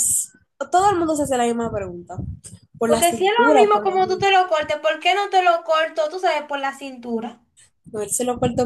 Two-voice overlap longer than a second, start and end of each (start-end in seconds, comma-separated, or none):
2.8-4.3